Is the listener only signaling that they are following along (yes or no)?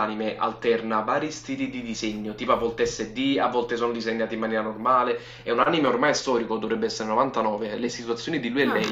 yes